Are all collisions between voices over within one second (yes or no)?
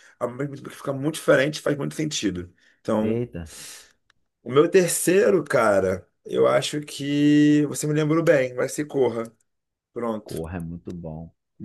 yes